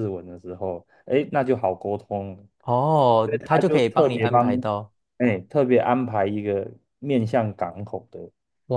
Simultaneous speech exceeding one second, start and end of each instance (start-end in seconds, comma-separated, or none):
3.2-4.6